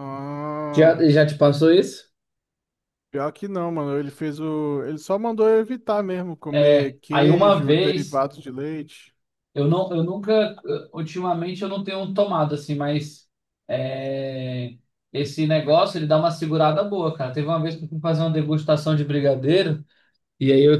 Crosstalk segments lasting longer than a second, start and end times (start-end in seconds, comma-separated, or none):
6.5-8.3